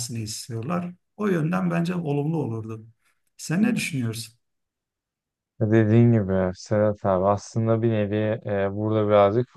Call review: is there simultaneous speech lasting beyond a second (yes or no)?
no